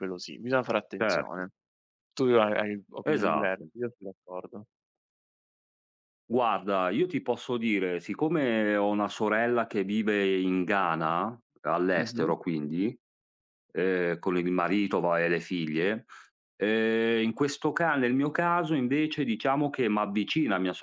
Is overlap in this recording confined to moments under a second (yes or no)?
yes